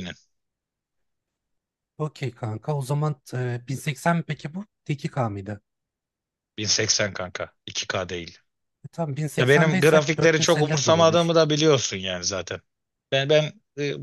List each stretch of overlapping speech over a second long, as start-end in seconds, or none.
9.4-11.3